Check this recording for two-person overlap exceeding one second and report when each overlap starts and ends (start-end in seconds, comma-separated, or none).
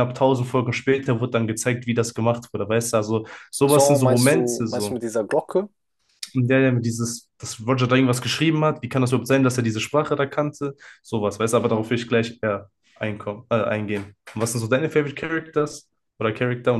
3.6-5.0